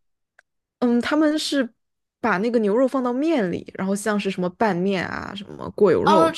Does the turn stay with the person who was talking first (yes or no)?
no